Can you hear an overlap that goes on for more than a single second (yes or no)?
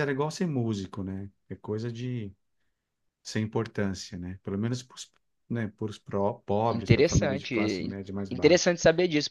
yes